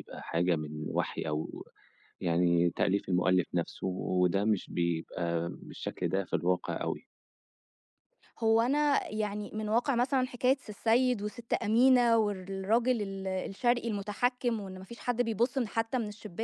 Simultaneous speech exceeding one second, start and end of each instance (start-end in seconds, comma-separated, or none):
none